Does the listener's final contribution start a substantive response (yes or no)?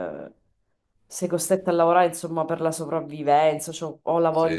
no